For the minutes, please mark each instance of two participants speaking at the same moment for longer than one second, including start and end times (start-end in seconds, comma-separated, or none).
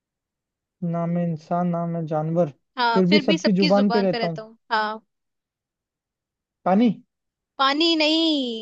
2.9-4.5